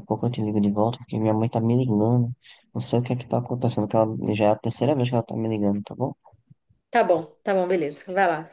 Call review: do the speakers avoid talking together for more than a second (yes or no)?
yes